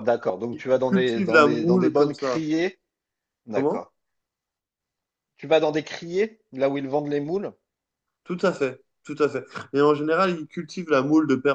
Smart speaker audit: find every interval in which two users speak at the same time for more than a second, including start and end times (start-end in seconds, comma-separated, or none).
0.5-2.4